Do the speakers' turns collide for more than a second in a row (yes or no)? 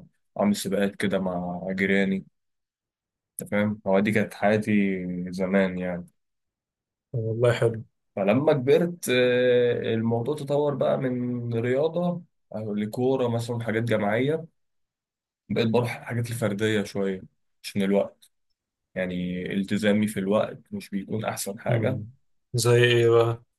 no